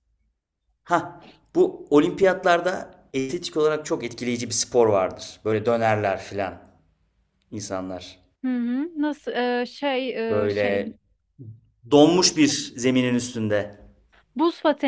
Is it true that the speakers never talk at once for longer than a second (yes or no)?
yes